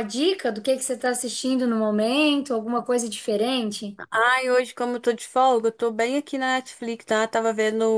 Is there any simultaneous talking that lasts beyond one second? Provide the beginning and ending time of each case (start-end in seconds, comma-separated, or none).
none